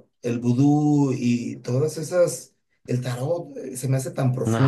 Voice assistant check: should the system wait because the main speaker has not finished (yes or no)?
yes